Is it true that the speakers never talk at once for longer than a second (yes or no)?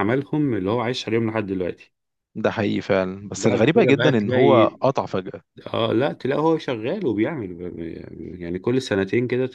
no